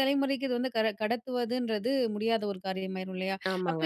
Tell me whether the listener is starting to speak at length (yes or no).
no